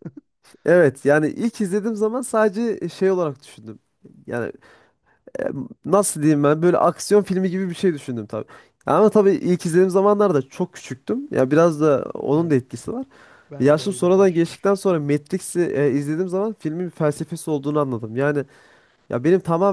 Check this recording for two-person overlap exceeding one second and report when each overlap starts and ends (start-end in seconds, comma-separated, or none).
13.6-14.8